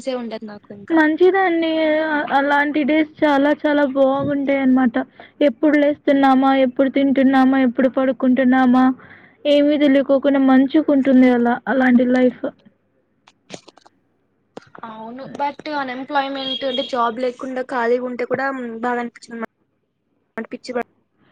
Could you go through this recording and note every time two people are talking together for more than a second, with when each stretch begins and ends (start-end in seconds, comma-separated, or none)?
none